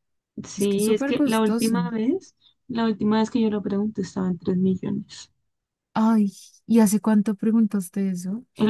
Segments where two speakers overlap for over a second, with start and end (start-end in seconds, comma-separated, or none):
0.6-1.8